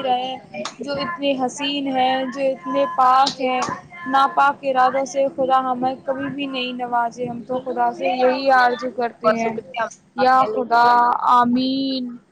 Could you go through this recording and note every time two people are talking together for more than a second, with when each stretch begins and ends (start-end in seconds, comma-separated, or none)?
none